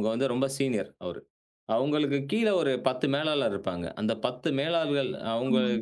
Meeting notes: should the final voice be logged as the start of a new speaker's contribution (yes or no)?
no